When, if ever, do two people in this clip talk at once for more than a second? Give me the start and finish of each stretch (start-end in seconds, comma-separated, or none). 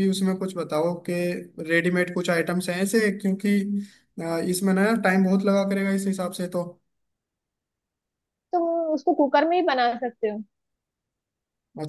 none